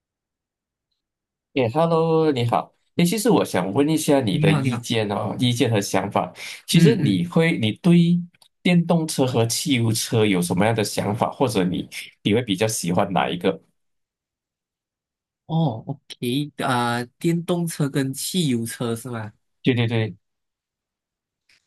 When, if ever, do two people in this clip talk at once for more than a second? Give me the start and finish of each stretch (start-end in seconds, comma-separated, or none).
none